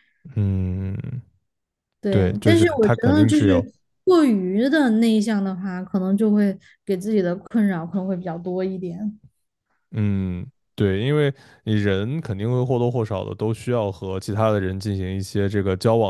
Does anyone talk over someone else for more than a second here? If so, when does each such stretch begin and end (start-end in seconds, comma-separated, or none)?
2.1-3.7